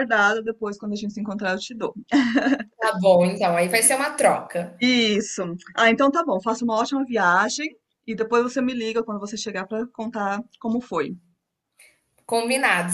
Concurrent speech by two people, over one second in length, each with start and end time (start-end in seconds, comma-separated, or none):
none